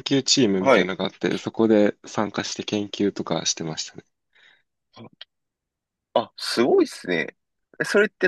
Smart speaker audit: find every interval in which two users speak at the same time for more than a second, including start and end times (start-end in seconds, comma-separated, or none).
none